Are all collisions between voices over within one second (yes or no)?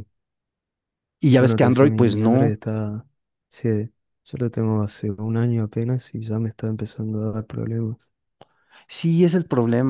no